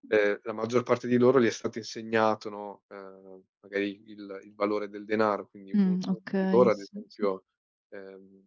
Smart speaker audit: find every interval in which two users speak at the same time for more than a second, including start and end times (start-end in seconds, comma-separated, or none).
5.7-7.3